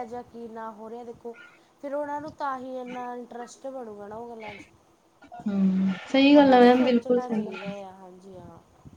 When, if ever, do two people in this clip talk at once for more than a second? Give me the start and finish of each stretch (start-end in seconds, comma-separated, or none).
6.3-7.6